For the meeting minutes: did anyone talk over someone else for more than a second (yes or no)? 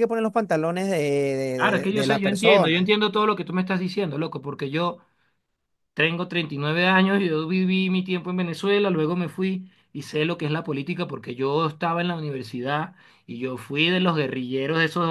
yes